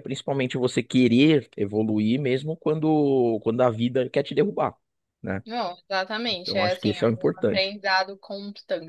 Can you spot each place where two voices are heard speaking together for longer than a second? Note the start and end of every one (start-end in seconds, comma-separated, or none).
6.3-7.7